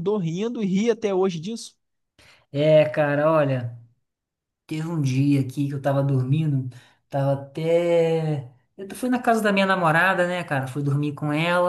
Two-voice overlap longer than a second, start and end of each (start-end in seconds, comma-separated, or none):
none